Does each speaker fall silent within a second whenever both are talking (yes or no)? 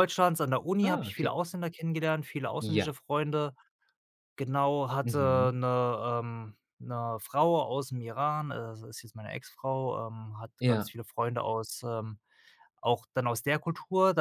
yes